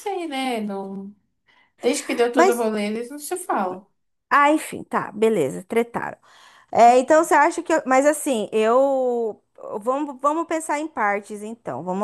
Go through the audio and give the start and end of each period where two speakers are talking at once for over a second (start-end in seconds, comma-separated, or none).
none